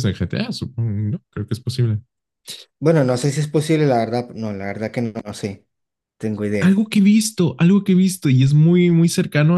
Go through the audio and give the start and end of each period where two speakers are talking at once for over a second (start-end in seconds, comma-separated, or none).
none